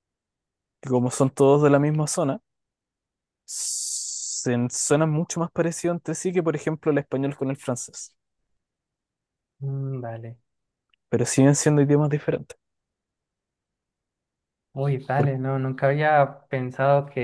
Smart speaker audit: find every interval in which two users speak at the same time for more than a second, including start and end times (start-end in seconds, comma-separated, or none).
none